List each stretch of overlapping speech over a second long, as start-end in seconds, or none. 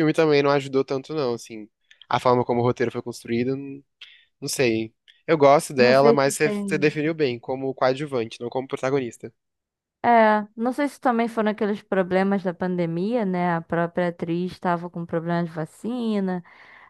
5.8-7.0